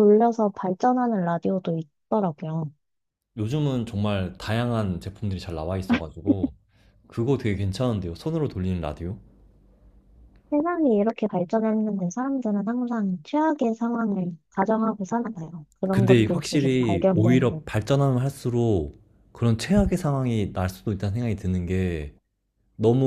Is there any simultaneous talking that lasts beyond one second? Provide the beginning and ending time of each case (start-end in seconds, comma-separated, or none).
15.9-17.7